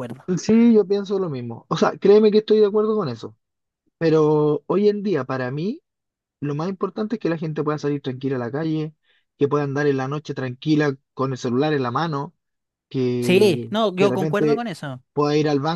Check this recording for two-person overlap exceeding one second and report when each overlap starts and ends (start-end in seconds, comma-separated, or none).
13.2-14.6